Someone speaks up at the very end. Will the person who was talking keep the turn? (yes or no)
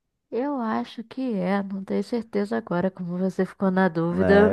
no